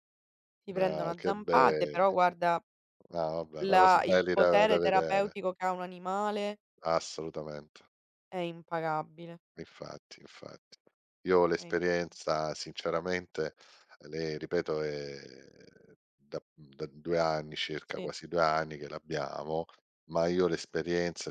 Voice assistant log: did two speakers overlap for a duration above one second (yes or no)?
yes